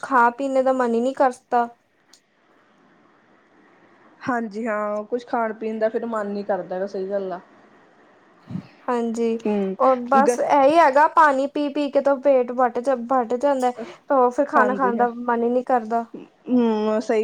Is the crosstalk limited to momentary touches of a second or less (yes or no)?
yes